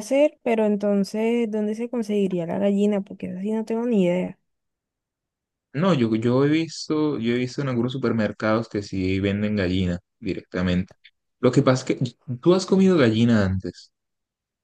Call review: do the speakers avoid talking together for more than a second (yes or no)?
yes